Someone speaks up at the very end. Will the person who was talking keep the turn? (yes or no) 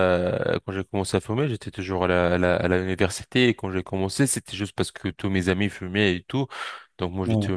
yes